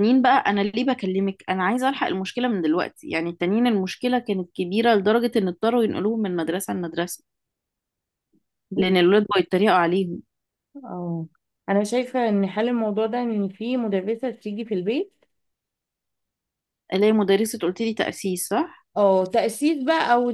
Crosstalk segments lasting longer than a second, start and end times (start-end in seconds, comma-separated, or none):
none